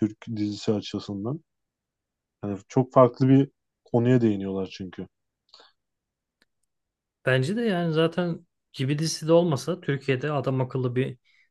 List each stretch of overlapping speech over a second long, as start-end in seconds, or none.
none